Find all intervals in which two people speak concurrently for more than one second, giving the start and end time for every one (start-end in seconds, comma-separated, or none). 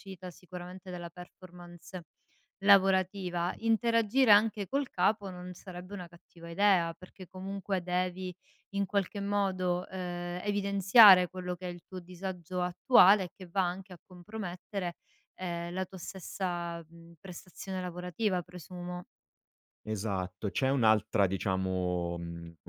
none